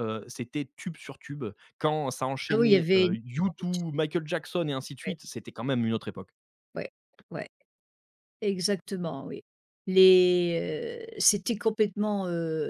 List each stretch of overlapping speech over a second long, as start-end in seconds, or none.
2.5-3.9